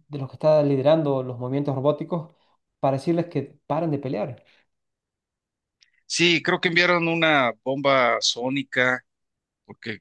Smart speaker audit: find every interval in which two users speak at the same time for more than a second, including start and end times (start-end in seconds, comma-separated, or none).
none